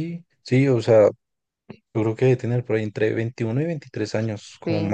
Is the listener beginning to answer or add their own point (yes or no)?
yes